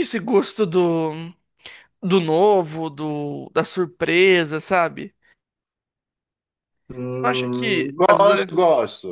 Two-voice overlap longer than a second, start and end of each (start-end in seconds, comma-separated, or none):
7.2-8.5